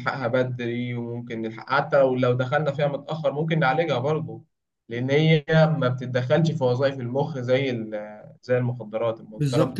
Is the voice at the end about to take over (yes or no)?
yes